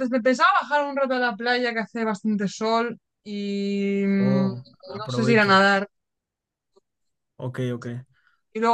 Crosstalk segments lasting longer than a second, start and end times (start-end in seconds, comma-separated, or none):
4.2-5.7